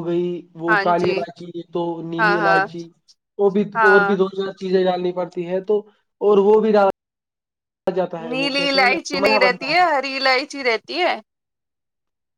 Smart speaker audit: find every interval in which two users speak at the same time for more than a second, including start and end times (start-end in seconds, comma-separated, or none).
8.3-9.7